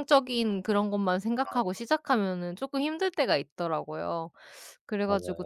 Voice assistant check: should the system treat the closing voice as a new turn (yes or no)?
no